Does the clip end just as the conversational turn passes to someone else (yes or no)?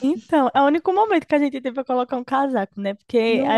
no